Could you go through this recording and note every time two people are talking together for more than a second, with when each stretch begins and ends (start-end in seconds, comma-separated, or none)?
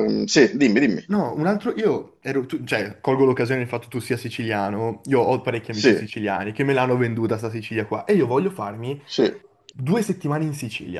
none